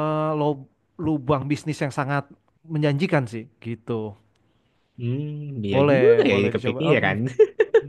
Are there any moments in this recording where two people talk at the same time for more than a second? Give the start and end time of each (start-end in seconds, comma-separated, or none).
5.7-7.2